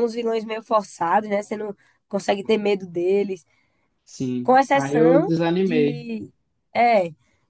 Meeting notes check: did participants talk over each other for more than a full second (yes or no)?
yes